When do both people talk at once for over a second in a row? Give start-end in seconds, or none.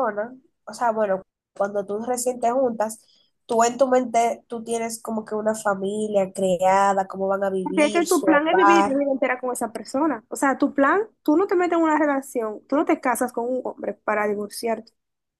7.6-9.0